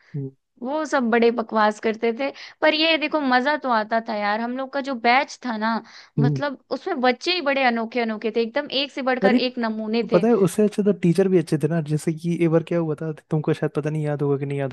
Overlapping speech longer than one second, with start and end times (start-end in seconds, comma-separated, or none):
none